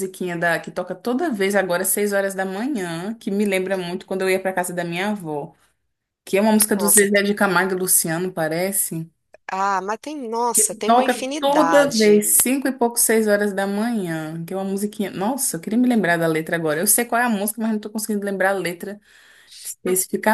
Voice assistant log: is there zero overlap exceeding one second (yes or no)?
no